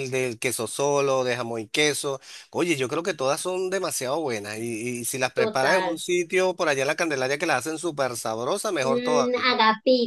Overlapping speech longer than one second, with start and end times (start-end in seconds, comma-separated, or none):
none